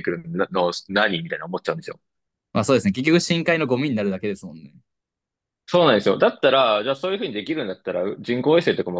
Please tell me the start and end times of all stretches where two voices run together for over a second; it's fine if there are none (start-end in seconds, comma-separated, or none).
none